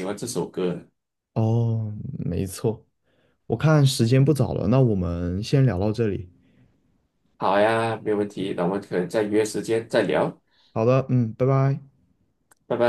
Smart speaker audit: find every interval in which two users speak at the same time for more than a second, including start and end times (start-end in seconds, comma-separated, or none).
none